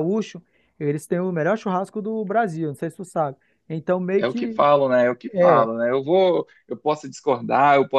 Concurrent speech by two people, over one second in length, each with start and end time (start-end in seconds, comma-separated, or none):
none